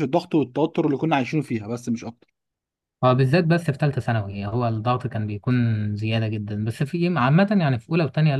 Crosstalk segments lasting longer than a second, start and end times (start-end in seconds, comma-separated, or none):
none